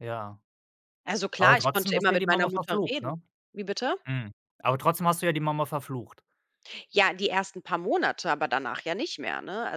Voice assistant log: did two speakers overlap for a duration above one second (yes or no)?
yes